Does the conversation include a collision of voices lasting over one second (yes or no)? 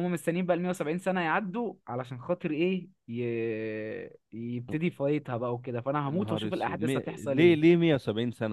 yes